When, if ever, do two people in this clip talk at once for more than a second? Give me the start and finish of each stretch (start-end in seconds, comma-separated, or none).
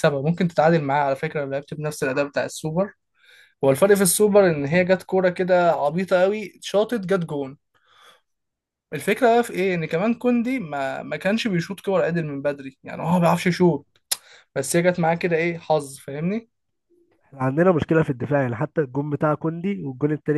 none